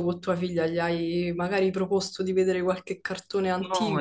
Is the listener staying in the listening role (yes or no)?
no